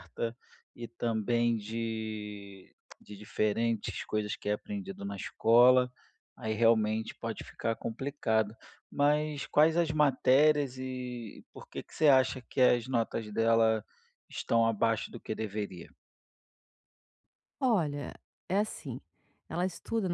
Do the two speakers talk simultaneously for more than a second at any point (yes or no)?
no